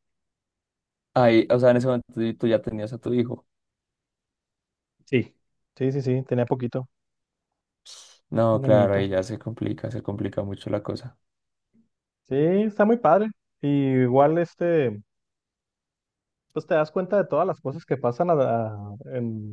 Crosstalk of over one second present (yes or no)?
no